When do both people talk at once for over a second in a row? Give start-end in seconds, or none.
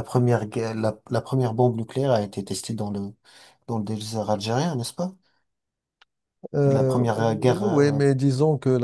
6.7-8.0